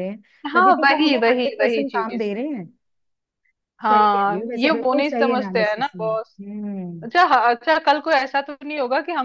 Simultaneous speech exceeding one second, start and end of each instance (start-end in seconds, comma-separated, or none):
0.5-2.3, 3.9-6.4